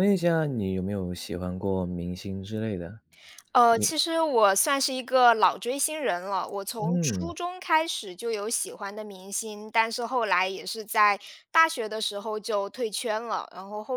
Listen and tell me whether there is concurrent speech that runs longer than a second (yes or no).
no